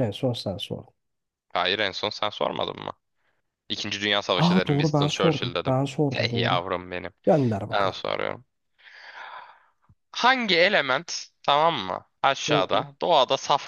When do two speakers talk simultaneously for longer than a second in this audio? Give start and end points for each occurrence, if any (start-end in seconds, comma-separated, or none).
4.3-6.6